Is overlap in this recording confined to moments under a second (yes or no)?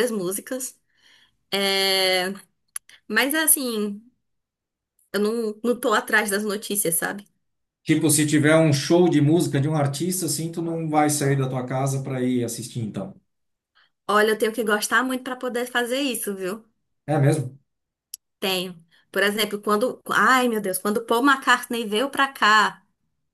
yes